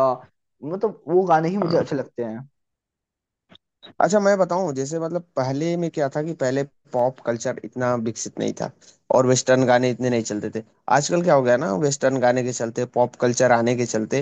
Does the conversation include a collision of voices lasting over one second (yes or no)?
no